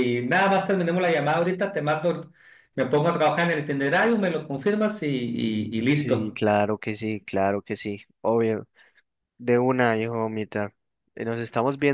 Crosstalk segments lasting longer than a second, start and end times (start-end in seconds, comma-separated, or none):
none